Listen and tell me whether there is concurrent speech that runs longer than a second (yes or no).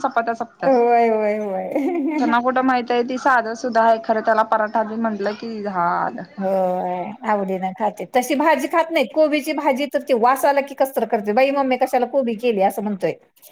no